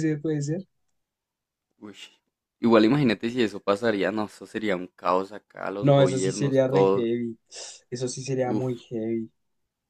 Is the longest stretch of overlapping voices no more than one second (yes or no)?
no